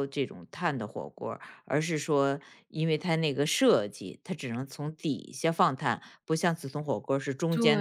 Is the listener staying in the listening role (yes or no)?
no